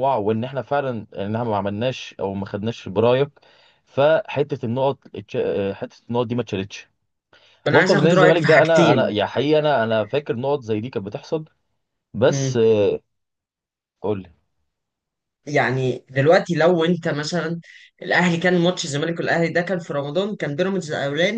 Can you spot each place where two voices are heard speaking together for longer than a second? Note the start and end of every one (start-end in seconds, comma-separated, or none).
7.7-9.2